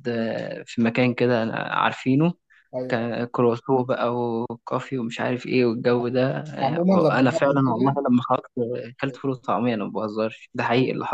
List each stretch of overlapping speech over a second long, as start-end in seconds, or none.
6.5-8.0